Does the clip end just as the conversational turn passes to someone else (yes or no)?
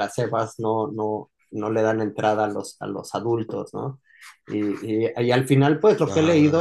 no